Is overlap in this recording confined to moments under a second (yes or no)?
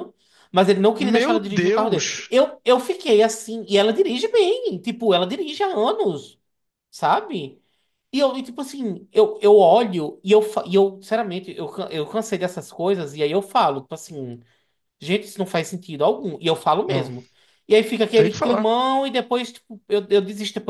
no